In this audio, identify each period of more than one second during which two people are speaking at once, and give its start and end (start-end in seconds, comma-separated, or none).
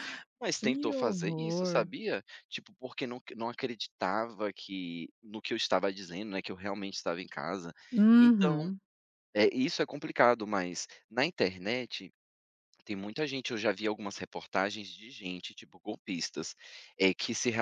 0.6-1.9